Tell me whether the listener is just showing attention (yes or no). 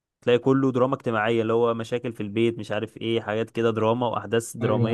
no